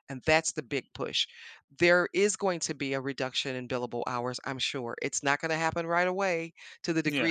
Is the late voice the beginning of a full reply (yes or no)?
no